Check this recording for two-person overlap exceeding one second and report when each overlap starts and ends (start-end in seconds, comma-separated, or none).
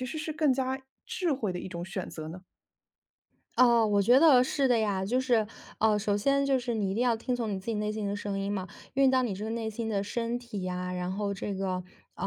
none